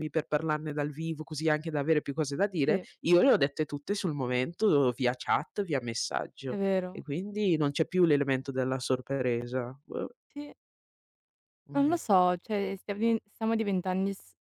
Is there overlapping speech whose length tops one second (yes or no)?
no